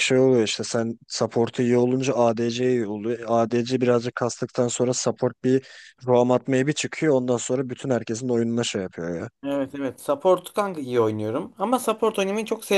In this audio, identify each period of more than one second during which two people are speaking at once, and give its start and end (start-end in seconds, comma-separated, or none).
none